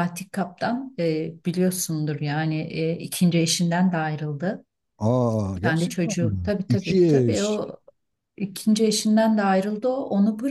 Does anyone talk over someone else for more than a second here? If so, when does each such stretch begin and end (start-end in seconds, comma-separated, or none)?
5.6-7.6